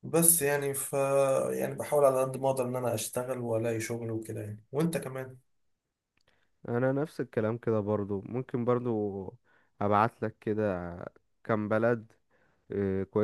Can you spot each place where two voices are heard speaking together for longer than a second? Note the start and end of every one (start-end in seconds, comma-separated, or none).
none